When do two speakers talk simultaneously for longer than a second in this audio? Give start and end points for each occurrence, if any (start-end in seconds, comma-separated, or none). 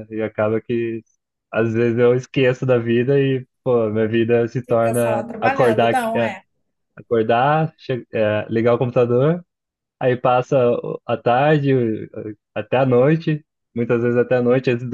4.7-6.3